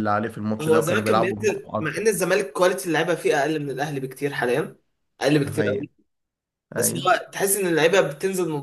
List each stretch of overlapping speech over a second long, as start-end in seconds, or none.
0.6-2.0